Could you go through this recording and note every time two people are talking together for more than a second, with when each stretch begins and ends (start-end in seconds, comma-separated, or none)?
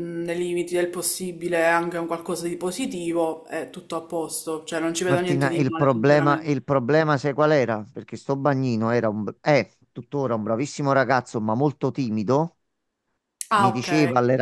5.0-6.6